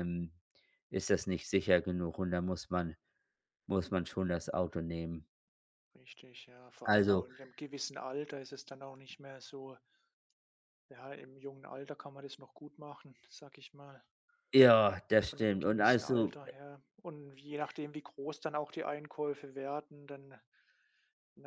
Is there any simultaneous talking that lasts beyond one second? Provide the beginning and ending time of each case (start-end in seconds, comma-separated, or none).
15.2-16.4